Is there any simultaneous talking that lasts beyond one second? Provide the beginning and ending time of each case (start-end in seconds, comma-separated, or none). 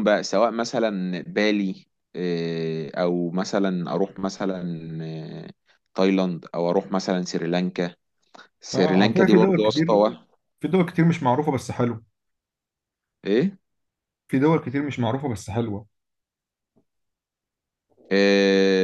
8.7-10.0